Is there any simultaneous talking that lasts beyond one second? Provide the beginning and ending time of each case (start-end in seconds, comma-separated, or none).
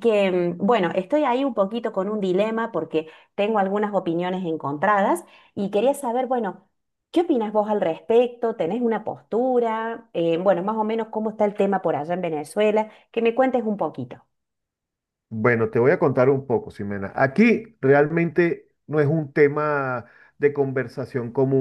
none